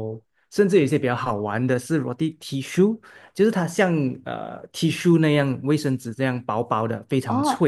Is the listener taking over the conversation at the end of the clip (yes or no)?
yes